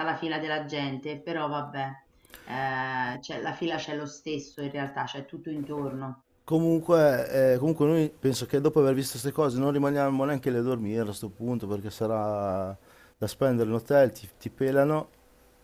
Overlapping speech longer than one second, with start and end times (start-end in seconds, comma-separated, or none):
none